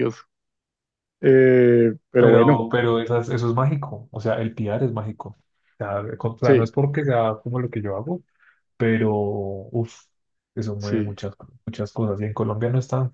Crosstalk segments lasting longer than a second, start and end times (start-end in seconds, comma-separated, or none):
none